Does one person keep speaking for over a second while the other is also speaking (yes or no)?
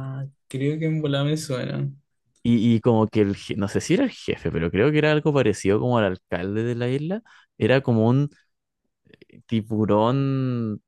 no